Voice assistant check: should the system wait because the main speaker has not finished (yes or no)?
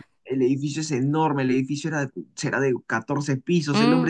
yes